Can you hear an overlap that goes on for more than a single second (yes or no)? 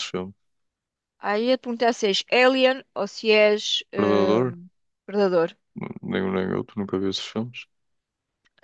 no